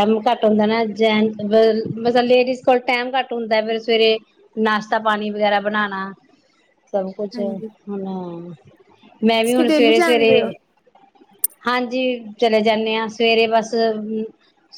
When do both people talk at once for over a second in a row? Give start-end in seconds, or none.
9.3-10.5